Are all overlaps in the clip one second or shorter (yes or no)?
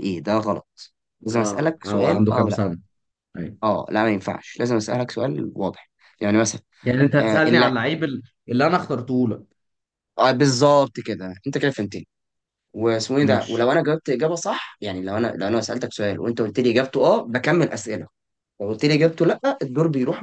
no